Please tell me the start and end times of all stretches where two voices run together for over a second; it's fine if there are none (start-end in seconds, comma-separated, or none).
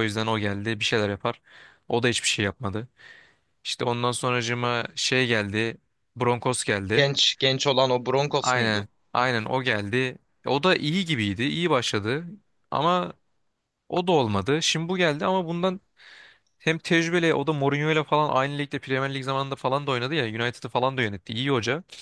none